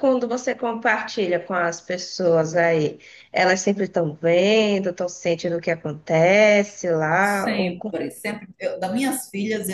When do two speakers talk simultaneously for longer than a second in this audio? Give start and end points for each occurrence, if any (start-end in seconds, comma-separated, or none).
none